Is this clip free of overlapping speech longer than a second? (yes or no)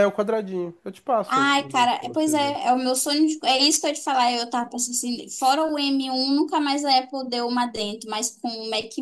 no